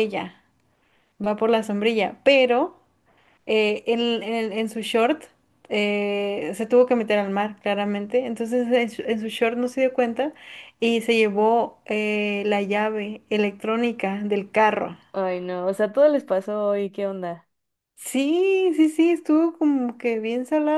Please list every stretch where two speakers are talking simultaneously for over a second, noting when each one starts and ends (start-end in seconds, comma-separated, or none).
none